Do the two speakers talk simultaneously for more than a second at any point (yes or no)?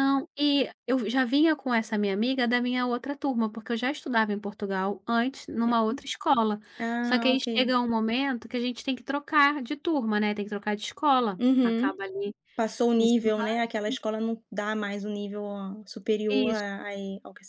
no